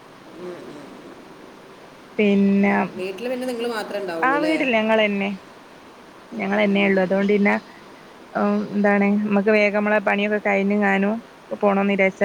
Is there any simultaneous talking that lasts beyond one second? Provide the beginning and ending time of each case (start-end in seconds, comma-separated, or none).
none